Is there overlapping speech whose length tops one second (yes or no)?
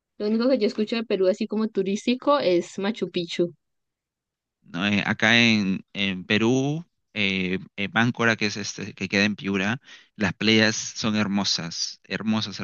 no